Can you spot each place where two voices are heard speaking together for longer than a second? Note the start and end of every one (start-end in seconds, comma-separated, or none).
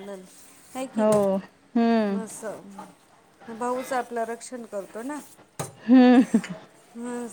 1.0-2.2